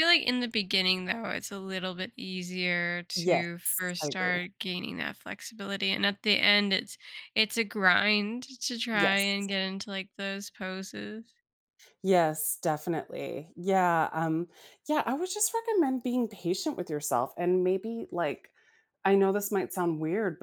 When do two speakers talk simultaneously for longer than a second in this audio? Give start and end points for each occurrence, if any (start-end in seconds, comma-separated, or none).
3.2-4.5